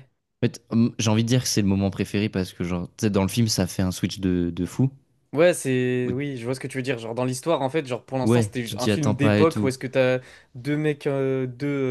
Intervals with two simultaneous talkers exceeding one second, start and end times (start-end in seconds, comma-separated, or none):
8.2-9.7